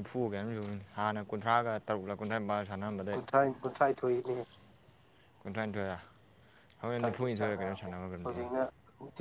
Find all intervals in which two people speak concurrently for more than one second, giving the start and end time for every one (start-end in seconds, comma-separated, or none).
6.8-8.5